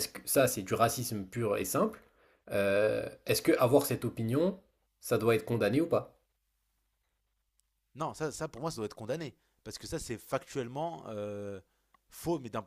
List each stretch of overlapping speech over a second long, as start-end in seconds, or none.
none